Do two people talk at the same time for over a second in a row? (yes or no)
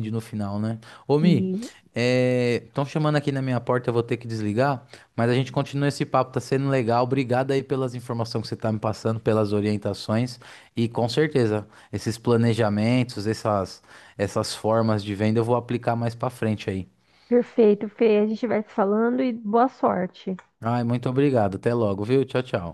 no